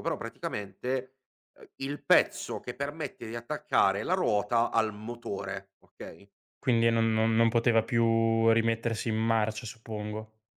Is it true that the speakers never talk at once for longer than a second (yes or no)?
yes